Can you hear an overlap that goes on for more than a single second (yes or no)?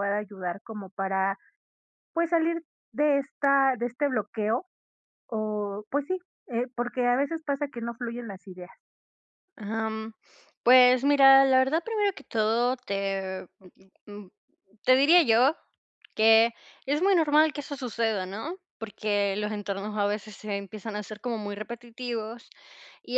no